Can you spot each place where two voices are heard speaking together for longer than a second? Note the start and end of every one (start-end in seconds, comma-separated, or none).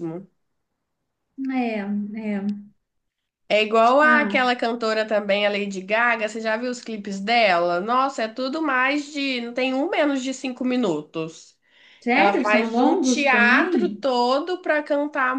12.1-14.0